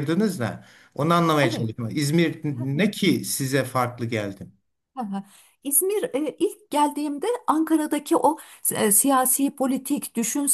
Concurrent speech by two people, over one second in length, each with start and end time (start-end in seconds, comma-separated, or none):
none